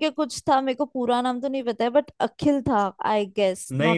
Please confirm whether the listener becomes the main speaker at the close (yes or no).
yes